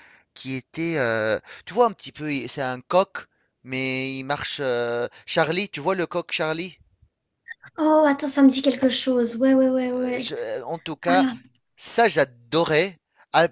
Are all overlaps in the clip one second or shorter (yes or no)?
yes